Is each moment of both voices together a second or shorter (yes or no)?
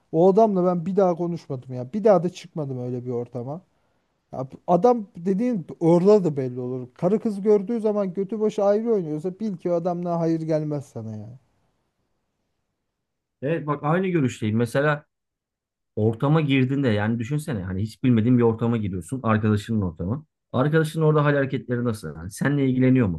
yes